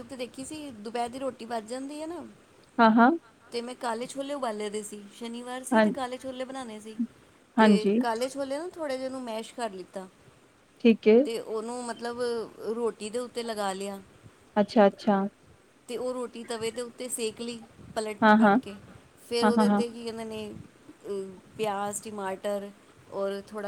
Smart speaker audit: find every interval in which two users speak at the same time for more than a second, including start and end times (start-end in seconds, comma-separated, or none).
none